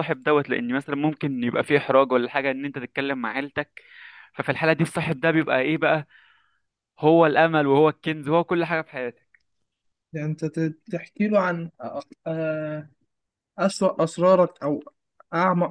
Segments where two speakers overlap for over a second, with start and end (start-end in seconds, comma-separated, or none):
none